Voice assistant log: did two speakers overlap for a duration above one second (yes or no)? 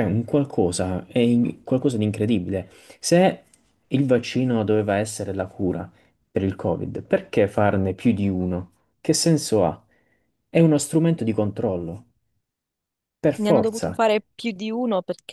no